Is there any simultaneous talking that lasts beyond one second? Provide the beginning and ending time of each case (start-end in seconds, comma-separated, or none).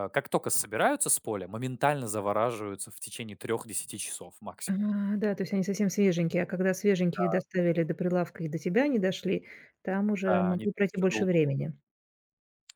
10.2-11.7